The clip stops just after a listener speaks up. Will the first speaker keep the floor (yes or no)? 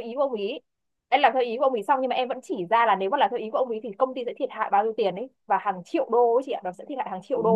no